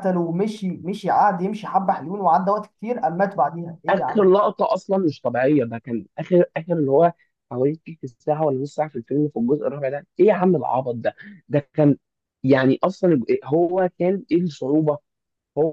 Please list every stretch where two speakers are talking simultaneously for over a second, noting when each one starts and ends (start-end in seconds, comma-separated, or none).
none